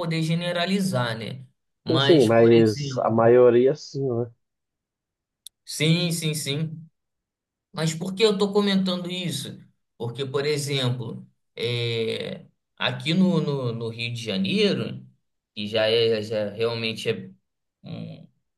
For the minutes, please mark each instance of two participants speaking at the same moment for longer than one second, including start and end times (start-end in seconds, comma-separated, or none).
1.9-3.3